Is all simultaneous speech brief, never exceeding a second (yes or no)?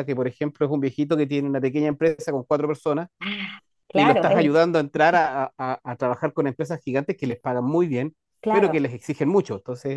yes